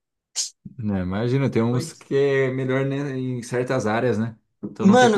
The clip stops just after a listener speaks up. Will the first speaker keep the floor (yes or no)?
no